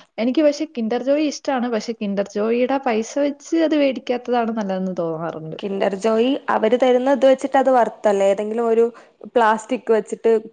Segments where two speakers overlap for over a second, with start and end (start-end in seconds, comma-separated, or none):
none